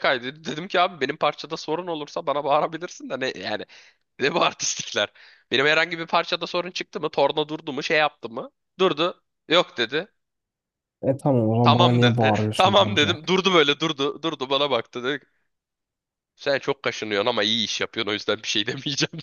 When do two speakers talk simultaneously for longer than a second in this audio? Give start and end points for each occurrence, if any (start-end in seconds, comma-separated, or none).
11.6-13.2